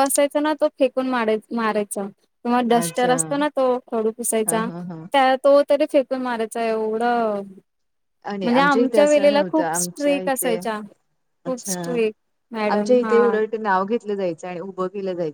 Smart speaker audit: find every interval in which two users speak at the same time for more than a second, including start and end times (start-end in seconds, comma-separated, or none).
8.4-10.6